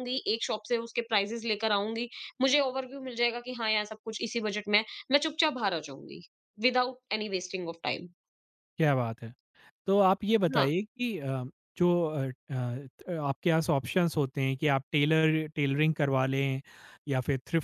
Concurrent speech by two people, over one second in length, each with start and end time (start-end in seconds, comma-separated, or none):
none